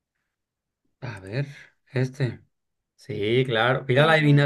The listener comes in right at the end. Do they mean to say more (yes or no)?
no